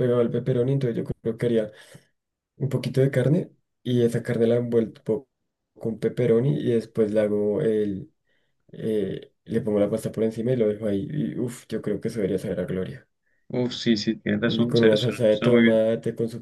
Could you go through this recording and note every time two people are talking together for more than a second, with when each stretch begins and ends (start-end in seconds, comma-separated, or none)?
14.4-15.8